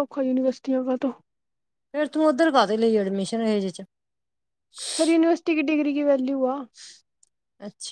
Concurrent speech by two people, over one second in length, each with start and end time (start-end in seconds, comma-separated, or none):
none